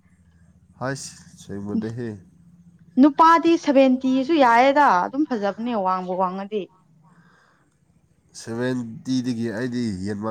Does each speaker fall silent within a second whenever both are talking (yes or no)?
yes